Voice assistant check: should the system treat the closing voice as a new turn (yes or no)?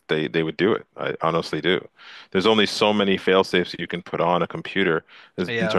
no